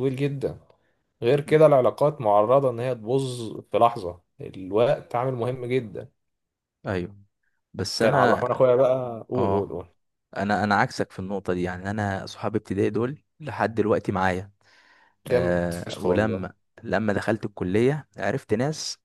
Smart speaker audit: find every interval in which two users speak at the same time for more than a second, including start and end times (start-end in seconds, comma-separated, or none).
15.3-16.5